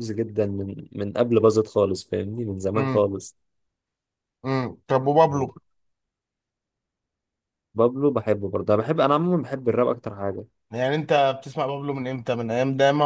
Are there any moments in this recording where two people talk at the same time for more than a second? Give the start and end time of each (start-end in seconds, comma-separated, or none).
none